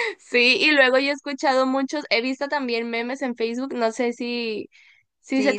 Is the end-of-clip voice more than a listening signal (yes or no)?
no